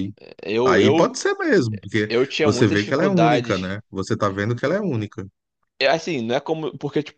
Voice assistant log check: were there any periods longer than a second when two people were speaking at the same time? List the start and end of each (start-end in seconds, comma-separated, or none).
2.1-3.8